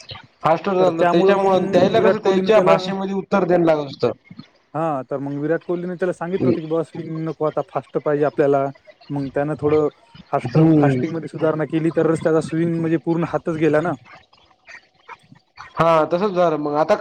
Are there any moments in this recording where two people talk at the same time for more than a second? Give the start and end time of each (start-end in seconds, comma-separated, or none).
0.8-2.8